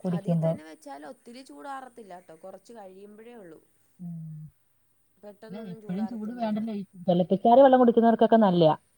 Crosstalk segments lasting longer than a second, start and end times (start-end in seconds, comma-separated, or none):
none